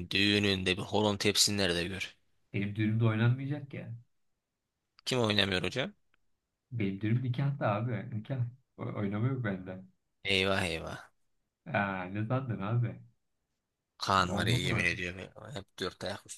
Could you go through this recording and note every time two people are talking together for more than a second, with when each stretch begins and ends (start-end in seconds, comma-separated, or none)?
none